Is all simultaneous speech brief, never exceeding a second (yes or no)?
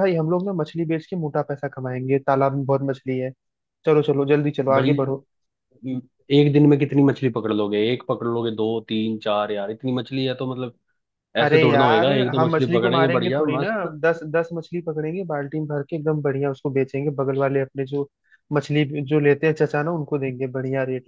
no